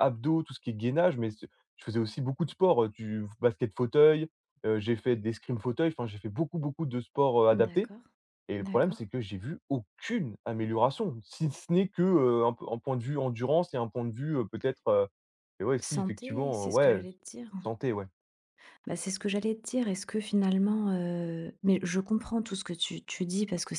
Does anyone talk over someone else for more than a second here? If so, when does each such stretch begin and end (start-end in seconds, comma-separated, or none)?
15.8-17.0